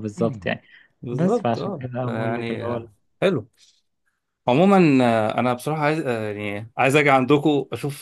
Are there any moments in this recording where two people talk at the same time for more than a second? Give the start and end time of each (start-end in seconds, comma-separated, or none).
1.1-2.9